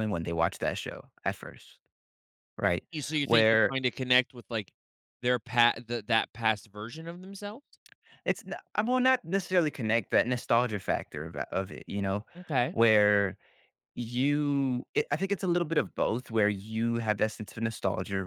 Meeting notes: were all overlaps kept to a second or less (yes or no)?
yes